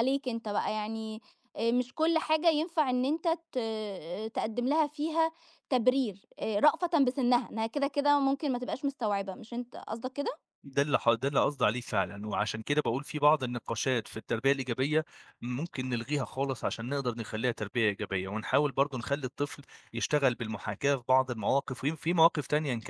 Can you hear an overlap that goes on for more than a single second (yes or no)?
no